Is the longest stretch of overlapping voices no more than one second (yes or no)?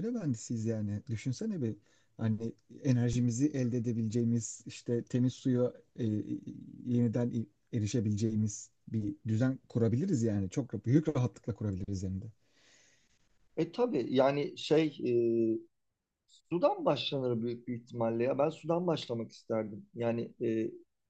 yes